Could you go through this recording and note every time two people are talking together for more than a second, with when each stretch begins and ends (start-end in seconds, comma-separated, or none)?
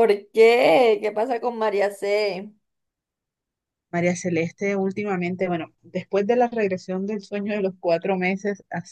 none